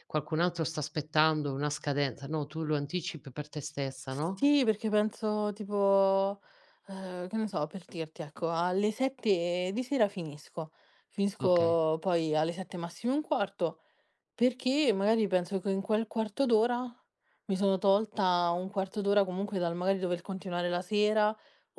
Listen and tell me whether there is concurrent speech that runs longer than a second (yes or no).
no